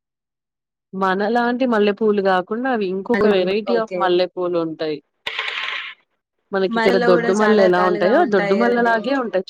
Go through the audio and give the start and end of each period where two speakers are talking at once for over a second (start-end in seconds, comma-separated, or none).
6.8-8.9